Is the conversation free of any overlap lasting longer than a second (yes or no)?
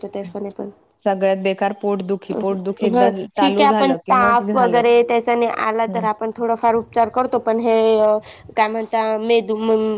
no